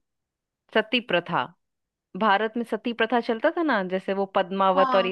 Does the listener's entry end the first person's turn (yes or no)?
no